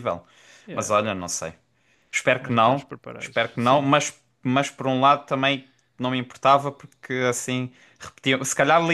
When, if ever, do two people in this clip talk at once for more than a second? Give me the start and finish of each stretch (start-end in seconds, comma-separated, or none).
2.4-3.9